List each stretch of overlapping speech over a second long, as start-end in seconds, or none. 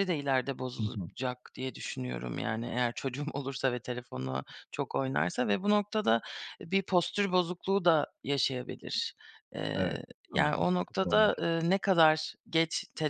9.7-11.2